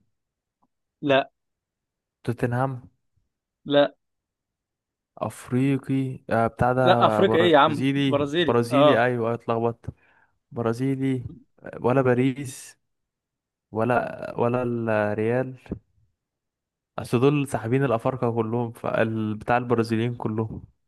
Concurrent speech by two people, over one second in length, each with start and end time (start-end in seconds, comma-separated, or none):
6.8-9.1